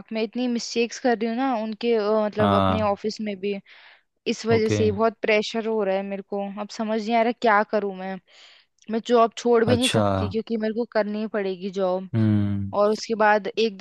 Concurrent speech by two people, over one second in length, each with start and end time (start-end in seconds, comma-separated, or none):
none